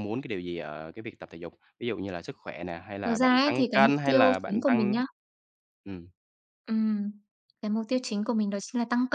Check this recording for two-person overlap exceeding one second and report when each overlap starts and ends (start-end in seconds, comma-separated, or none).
3.0-5.0